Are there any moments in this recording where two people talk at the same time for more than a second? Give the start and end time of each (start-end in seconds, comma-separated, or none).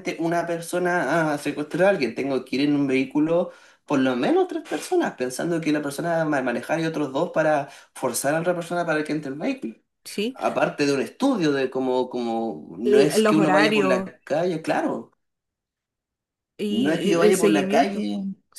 12.8-14.1, 16.7-18.1